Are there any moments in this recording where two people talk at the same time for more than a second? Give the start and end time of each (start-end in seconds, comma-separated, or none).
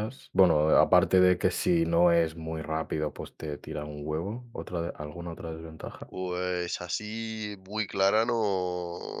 none